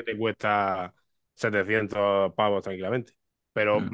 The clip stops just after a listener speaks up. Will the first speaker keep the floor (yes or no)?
yes